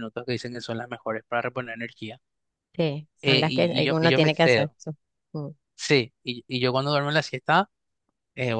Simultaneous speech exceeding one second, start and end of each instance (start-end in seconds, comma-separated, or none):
3.2-4.8